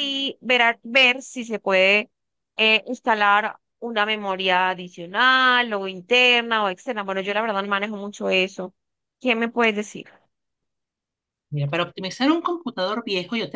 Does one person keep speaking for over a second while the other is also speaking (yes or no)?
no